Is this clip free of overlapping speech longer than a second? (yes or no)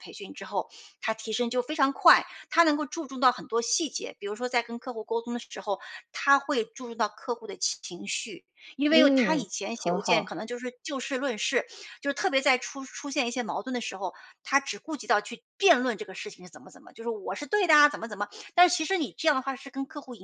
no